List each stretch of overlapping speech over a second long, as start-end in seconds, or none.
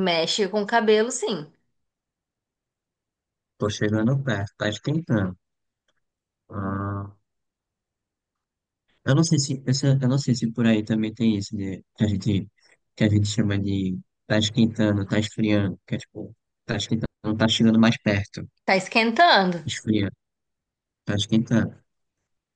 none